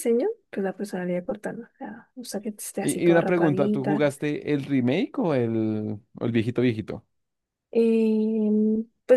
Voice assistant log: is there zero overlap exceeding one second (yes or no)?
no